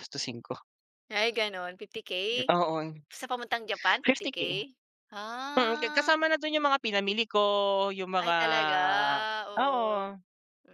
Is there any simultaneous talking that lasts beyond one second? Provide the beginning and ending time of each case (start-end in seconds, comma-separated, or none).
none